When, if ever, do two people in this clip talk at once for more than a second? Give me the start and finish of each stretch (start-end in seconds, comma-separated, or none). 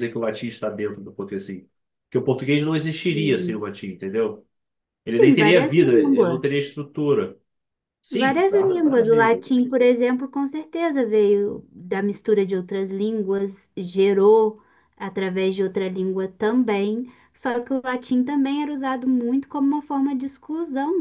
5.2-6.6, 8.1-9.4